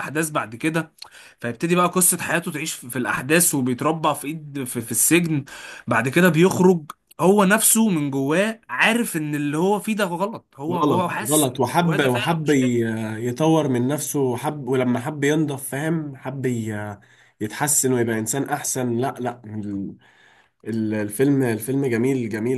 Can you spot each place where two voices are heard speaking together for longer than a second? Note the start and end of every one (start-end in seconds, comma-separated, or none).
10.7-12.7